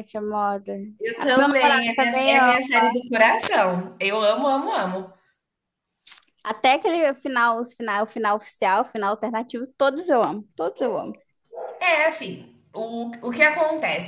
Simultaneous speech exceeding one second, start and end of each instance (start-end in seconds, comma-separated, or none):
1.2-2.5